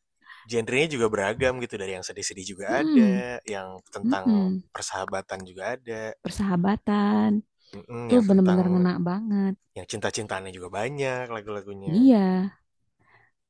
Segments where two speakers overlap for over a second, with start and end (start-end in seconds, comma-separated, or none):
none